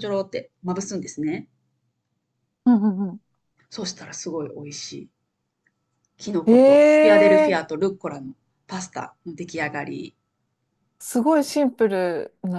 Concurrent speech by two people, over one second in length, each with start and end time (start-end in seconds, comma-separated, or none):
6.5-7.8